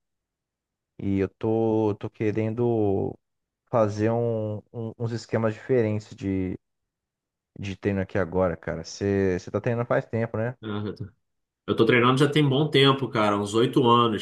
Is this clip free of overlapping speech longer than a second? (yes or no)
yes